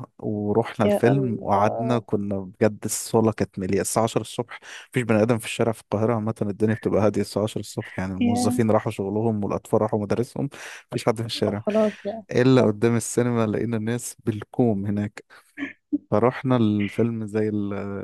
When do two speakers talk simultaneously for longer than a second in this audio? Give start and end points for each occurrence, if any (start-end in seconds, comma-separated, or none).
0.8-2.1